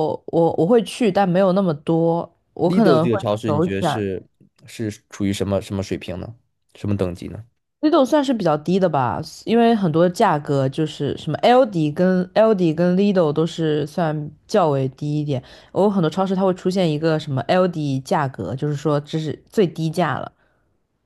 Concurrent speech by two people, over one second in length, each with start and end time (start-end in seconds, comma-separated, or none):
2.6-4.0